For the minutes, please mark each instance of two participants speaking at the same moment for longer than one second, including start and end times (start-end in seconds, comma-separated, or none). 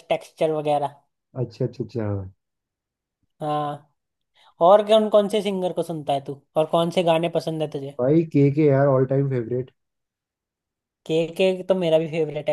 none